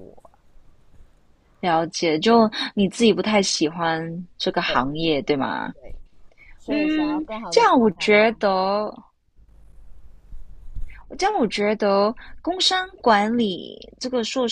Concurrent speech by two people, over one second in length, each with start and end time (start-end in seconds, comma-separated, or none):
6.7-8.4